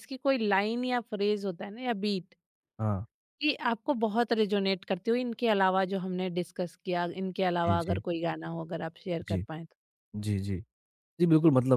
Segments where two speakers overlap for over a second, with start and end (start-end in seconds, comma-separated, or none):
none